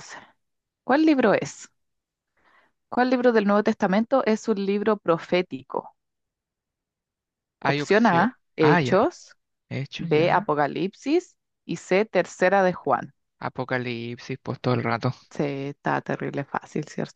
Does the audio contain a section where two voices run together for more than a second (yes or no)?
yes